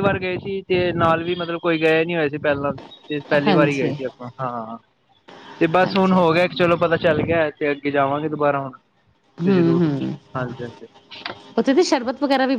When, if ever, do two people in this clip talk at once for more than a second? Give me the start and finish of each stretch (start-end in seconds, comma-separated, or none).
none